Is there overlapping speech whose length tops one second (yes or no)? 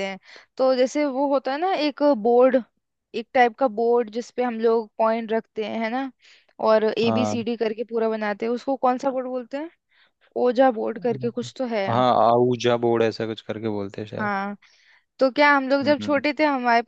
no